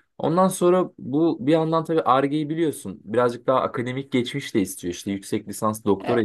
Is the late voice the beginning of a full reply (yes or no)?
no